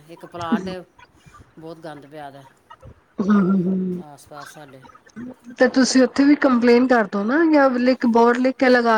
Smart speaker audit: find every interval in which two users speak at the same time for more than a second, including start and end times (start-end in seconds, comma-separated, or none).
none